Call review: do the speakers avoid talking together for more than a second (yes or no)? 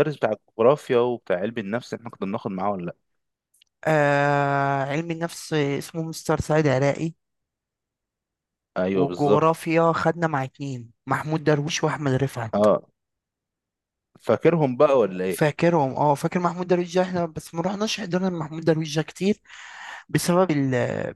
yes